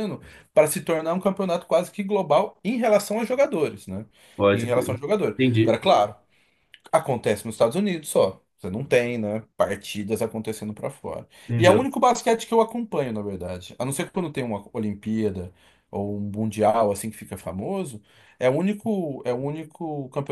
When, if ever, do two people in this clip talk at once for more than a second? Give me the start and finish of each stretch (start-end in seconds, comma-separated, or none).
4.5-6.1